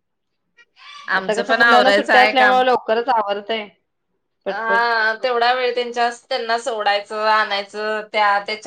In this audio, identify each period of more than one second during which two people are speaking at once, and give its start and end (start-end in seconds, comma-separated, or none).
1.2-2.6